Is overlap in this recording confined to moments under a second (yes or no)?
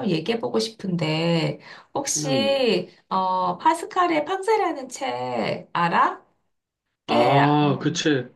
yes